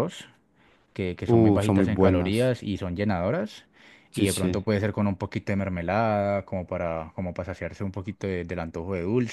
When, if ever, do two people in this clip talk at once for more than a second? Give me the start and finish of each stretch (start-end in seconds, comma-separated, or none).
1.3-2.6